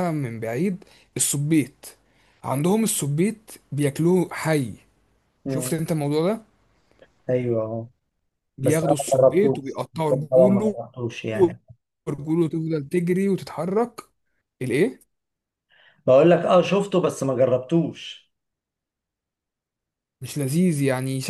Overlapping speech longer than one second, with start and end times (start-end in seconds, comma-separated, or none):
8.6-10.8